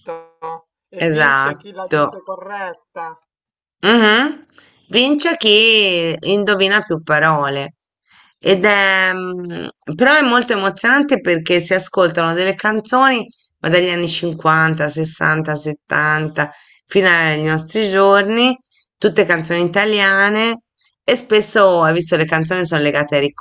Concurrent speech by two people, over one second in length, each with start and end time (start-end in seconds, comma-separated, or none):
1.0-2.2